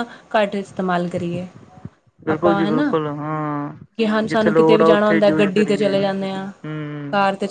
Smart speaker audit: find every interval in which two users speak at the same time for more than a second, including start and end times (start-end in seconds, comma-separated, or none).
4.3-5.9